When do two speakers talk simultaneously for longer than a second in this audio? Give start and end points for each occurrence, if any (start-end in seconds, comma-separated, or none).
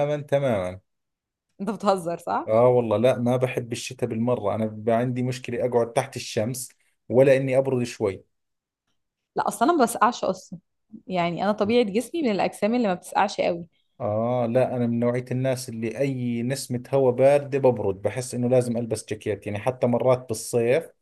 none